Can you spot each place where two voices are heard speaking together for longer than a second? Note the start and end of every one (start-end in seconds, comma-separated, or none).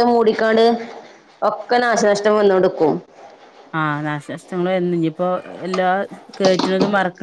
none